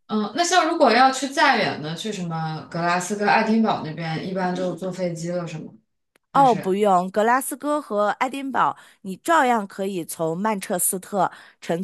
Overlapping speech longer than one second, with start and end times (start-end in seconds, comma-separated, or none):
none